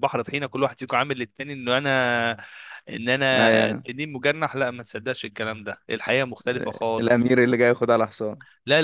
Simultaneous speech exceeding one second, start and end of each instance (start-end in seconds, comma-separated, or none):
none